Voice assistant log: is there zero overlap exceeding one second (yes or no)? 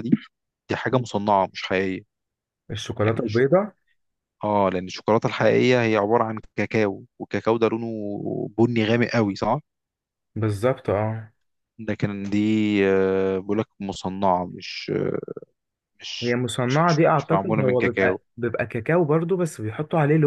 no